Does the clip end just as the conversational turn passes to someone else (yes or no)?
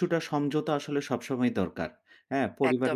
no